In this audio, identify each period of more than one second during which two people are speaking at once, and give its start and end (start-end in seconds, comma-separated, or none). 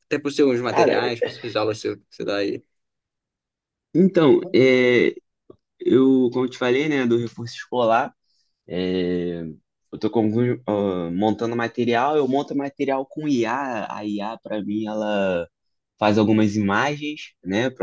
none